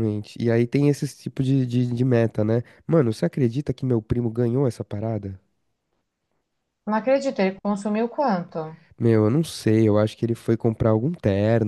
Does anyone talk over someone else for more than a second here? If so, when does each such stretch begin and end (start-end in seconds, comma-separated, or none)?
none